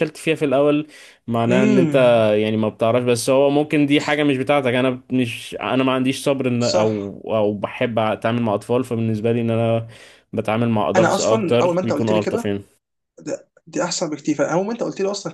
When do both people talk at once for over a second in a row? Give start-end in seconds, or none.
10.9-12.5